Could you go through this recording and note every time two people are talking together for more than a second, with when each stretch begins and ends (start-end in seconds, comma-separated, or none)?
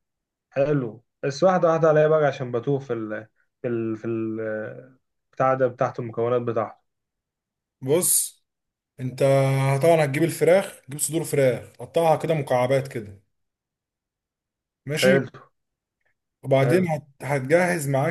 none